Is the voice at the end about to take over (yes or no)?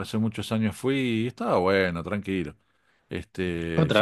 yes